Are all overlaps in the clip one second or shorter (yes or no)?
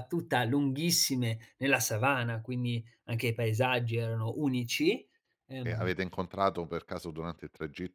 yes